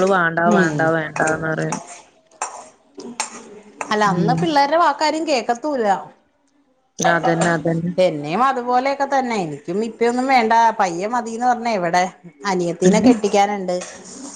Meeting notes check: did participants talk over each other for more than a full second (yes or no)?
no